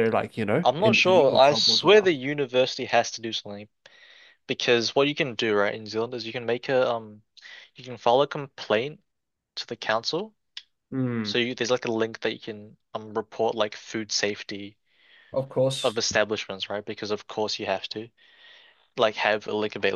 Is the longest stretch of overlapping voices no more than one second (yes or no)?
no